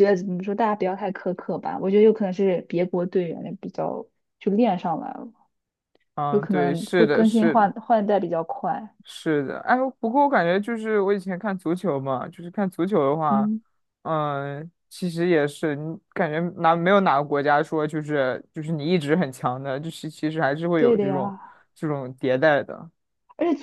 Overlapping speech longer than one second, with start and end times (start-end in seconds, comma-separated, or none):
6.3-7.7